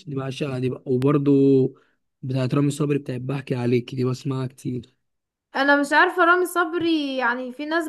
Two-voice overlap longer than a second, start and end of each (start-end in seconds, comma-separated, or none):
none